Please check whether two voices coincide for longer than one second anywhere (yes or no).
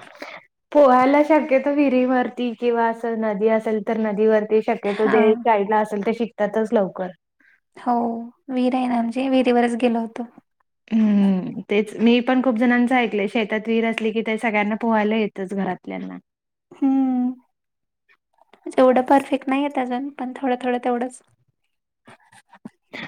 no